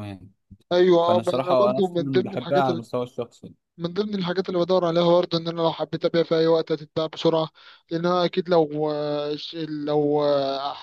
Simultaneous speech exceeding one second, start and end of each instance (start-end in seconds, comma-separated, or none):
1.0-2.6